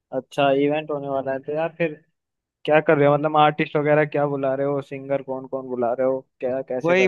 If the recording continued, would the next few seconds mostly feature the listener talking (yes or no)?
yes